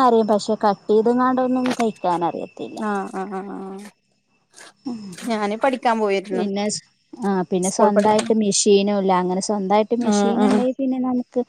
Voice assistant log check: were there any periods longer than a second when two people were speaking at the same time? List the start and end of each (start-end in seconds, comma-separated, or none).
none